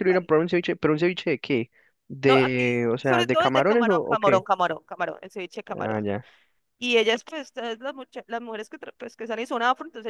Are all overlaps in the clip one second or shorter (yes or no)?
no